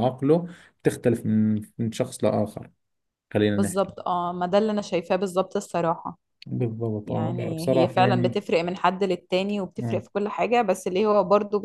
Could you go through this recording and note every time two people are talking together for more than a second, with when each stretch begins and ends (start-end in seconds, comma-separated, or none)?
7.1-8.4